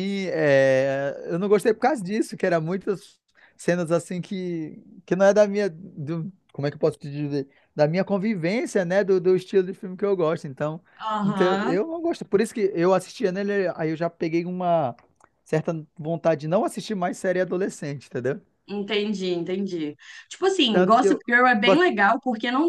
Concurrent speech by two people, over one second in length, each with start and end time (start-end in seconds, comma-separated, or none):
none